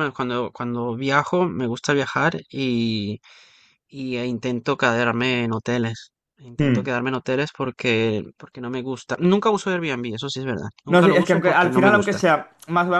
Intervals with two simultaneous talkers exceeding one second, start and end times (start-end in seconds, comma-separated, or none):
10.9-12.2